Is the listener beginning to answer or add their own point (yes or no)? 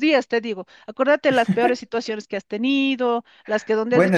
yes